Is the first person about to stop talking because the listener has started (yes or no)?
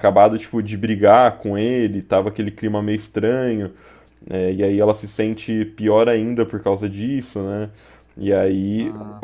no